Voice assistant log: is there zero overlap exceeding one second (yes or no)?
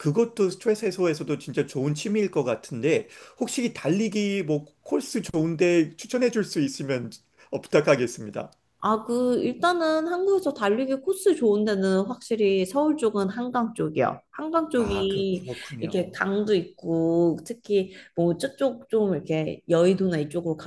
no